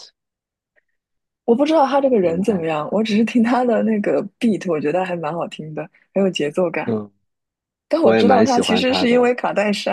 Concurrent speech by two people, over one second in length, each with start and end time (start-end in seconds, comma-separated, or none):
8.0-9.3